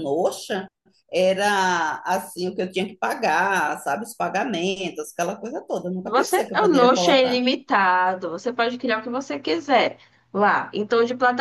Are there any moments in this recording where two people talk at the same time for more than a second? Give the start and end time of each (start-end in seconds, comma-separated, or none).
6.0-7.4